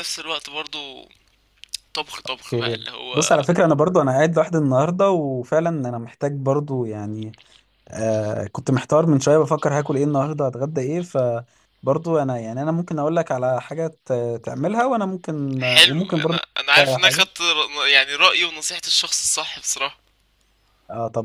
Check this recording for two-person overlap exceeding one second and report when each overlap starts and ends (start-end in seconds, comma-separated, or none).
15.6-17.3